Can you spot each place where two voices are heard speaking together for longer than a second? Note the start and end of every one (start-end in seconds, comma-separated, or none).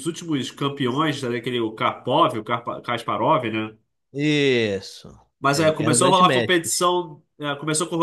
5.5-6.9